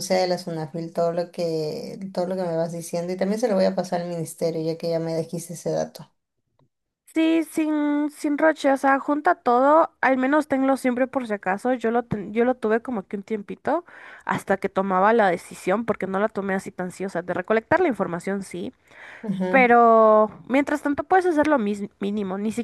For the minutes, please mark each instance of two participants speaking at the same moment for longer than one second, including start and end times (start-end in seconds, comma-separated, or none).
none